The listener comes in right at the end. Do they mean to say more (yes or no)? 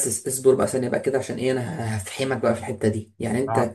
no